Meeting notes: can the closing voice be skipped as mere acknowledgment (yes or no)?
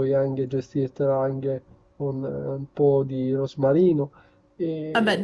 yes